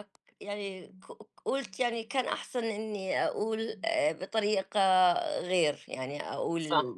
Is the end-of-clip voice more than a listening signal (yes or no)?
yes